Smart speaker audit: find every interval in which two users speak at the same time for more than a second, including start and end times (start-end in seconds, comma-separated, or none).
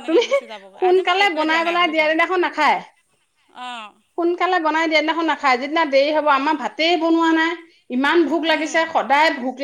0.5-2.1